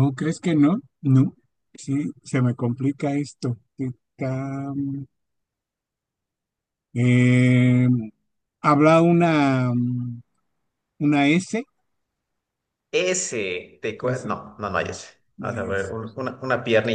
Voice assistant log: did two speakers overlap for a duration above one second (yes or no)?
no